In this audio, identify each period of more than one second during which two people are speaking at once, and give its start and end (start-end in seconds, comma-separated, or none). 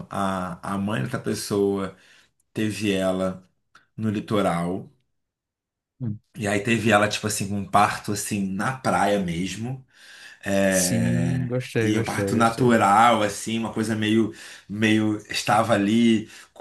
10.7-12.8